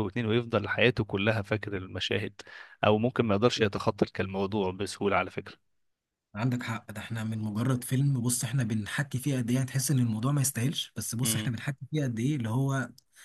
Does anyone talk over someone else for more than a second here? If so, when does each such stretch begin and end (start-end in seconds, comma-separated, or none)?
none